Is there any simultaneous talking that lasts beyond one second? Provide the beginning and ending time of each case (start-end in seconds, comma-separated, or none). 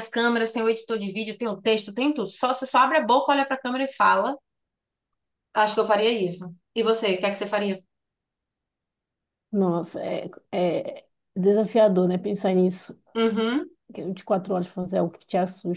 none